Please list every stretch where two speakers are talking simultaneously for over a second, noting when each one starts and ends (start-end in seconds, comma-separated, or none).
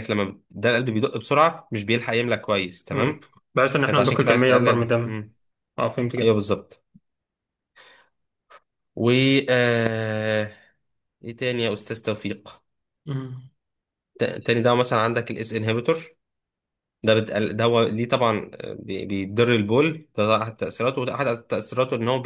3.9-5.2